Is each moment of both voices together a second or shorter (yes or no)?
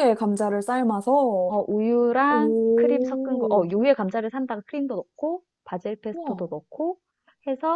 no